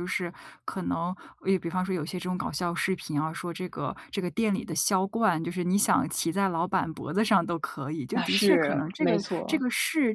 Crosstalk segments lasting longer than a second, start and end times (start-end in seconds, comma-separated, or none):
8.1-9.6